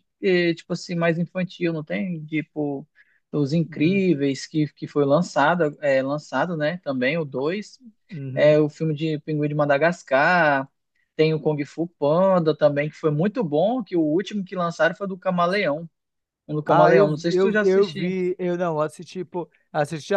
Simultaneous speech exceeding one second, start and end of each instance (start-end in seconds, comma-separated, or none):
16.7-18.2